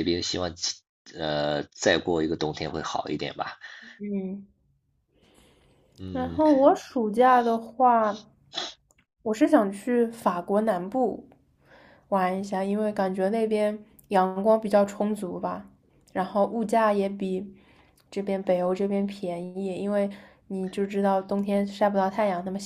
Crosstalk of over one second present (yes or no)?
no